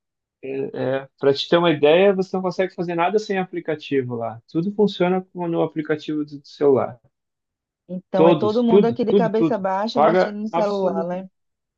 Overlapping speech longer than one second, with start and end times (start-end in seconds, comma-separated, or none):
8.1-11.3